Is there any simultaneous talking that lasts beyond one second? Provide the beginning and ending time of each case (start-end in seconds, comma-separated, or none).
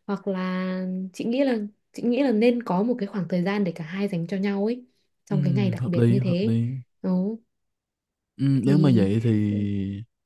5.3-6.5